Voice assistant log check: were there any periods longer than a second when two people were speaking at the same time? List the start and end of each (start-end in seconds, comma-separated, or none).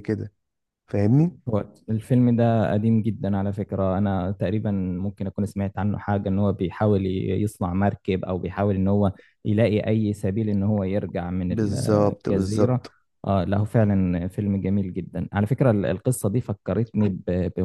11.5-12.9